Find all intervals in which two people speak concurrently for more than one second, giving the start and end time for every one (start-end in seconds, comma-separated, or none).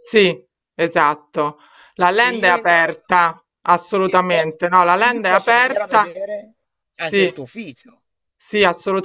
4.0-6.2